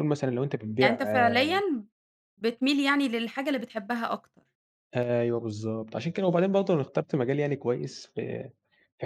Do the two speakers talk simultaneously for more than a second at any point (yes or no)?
no